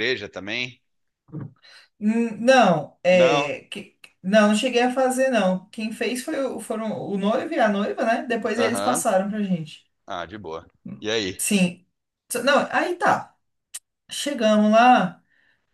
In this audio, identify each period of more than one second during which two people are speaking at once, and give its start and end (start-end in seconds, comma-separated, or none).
none